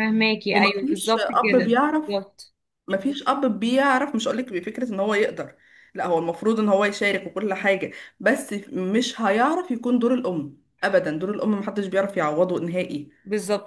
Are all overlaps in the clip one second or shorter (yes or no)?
no